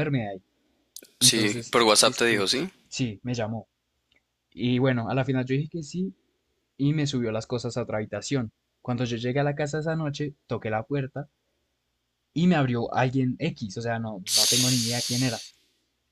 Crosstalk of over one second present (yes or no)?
yes